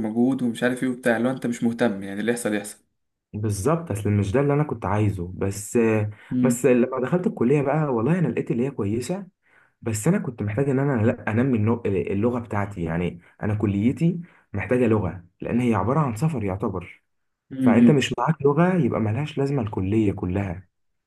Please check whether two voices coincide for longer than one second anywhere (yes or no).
no